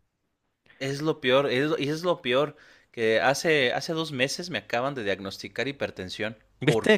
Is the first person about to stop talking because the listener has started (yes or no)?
yes